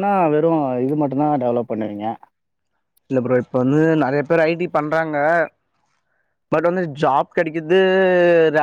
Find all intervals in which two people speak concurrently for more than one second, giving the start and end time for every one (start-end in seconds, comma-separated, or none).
none